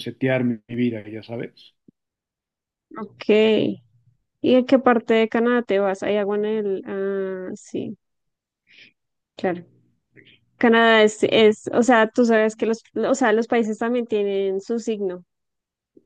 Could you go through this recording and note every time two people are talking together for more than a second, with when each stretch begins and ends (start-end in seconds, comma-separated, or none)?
none